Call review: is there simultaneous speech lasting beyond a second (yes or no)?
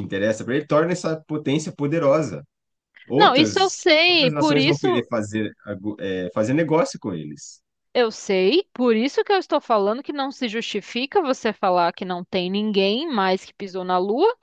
yes